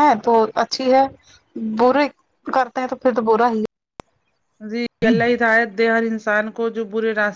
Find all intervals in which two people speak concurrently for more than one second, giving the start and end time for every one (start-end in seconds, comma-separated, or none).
none